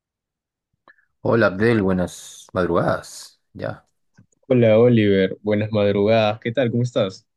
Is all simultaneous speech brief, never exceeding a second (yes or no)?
yes